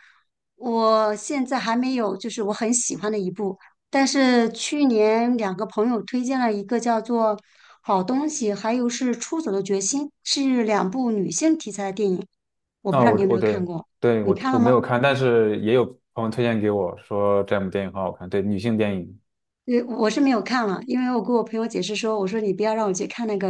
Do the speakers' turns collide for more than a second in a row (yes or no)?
yes